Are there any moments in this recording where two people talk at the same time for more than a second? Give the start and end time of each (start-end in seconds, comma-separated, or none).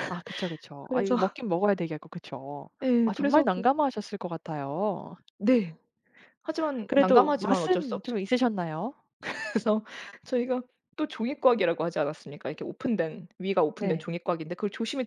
6.9-8.2